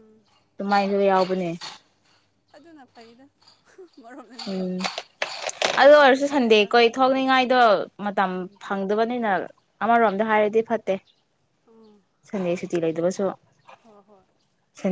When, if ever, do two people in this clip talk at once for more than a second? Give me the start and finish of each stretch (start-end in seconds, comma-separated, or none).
5.8-7.6